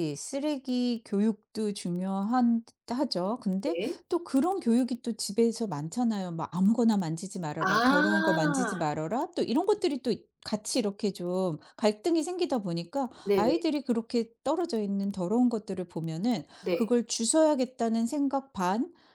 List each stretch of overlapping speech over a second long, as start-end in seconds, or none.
7.7-8.9